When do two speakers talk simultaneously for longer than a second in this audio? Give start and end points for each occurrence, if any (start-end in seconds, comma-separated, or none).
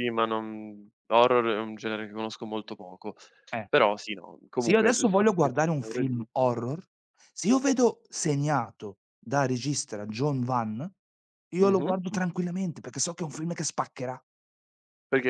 4.5-6.4